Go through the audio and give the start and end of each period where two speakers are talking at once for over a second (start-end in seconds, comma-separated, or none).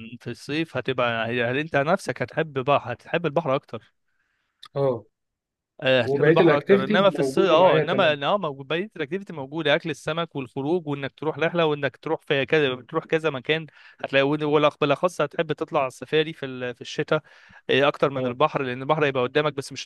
6.0-8.2